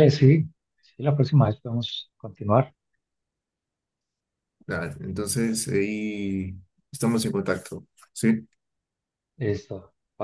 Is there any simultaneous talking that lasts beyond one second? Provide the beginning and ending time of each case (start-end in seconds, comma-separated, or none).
none